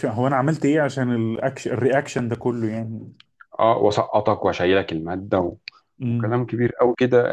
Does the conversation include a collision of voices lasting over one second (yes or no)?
no